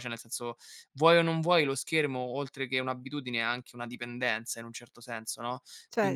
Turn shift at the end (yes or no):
yes